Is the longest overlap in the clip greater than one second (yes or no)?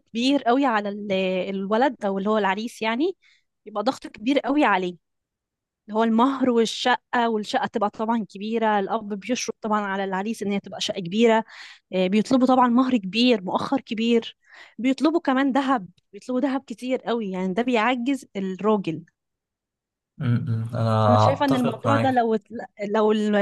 yes